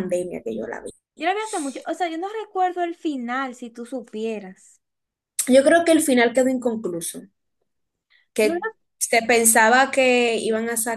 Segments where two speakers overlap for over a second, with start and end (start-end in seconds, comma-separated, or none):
none